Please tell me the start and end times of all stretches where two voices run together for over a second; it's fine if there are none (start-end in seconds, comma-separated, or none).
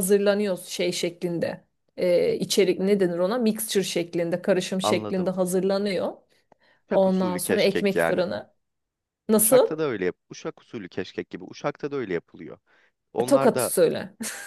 6.9-8.2